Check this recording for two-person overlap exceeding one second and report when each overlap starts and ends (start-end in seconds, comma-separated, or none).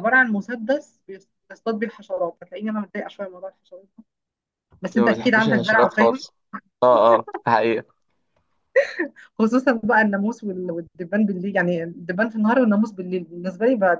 4.9-6.2